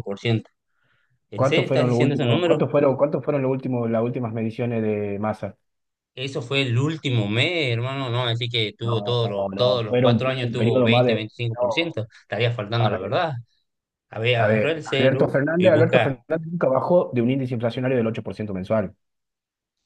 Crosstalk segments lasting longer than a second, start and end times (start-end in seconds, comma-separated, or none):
1.3-2.7, 8.8-12.0, 14.4-16.2